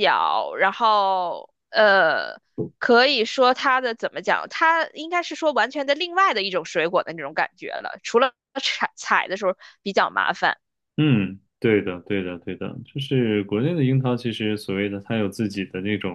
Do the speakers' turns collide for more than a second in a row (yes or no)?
no